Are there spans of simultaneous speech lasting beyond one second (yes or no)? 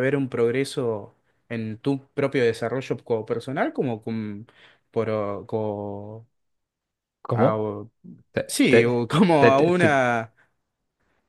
yes